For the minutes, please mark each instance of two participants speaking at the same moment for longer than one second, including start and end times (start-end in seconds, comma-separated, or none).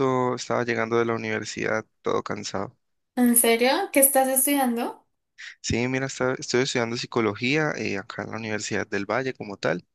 none